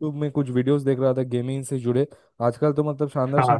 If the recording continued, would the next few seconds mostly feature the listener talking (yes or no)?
no